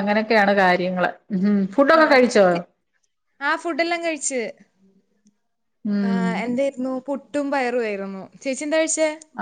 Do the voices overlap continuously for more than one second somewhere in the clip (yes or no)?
no